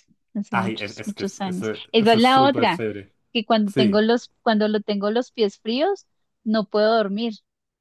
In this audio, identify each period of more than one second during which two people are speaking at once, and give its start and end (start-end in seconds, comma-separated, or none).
0.5-2.8